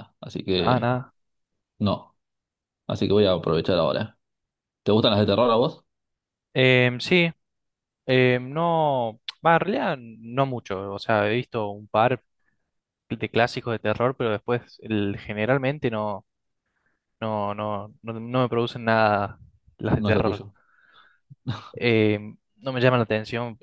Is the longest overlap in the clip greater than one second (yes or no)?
no